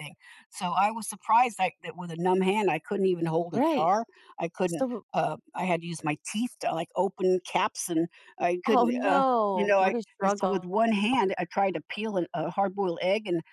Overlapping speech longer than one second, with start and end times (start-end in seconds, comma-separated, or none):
8.7-10.7